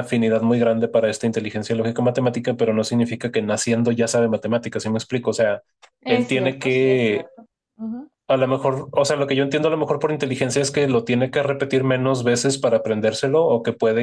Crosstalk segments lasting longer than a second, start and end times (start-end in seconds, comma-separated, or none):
6.1-7.3